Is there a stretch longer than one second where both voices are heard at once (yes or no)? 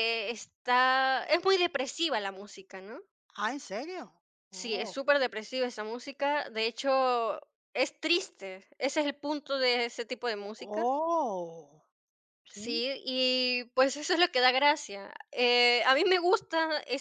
no